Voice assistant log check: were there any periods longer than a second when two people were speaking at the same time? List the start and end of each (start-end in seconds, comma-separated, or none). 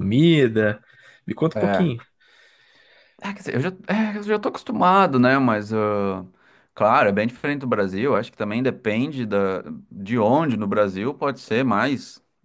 none